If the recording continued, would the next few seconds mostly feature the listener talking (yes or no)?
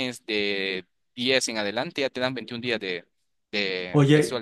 yes